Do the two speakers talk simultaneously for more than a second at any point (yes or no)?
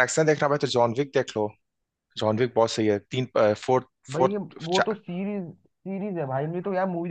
no